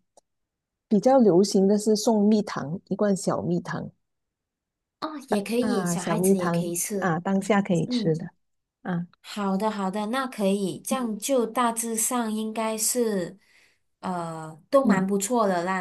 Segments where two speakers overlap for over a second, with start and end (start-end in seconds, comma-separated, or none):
5.6-7.2